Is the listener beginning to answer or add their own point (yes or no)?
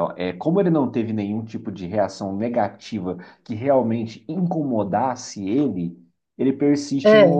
no